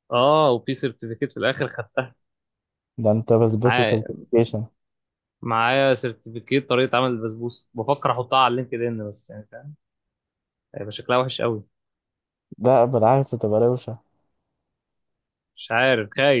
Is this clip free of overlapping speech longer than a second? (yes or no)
yes